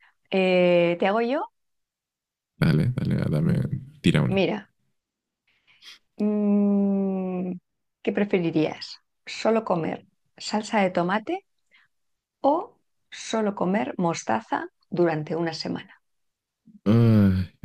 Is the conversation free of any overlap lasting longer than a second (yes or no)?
yes